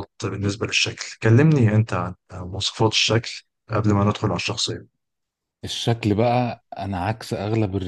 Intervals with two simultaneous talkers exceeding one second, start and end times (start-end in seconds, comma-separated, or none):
none